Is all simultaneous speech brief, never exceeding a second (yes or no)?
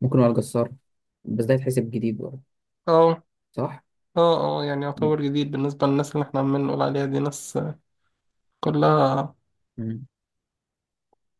yes